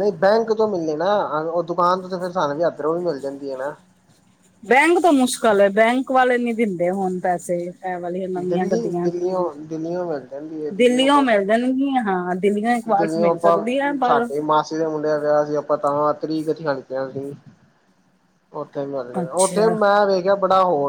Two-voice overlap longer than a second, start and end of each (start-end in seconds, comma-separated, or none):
none